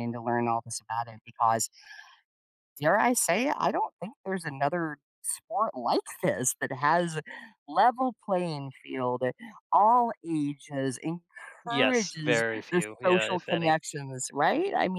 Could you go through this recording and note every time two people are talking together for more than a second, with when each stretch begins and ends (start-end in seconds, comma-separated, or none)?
11.7-13.7